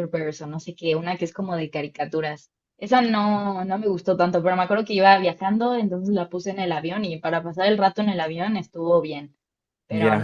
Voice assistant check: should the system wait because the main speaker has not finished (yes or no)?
no